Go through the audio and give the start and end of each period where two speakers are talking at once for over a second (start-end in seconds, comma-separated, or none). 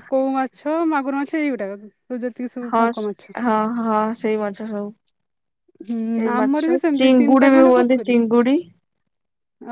6.2-8.1